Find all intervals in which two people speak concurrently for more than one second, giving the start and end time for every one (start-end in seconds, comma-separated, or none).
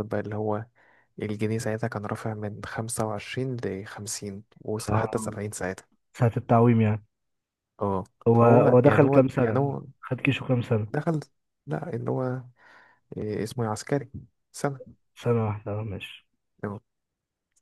8.3-9.8